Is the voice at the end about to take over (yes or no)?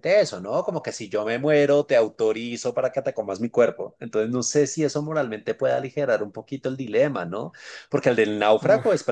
no